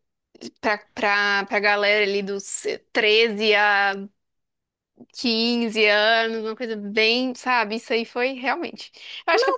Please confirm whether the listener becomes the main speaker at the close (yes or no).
no